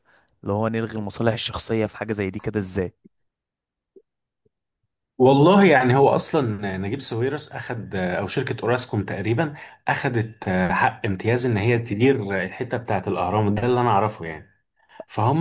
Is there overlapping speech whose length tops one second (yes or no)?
no